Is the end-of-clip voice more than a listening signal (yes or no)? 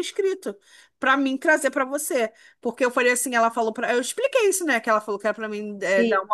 no